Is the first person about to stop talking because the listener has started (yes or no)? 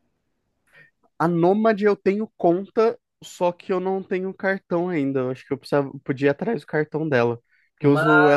no